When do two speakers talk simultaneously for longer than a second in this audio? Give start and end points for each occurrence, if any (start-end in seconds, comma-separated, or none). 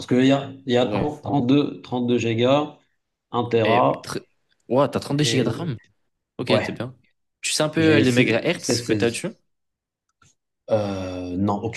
7.8-9.3